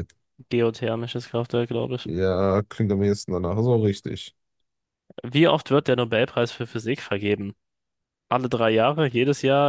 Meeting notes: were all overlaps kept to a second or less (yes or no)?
yes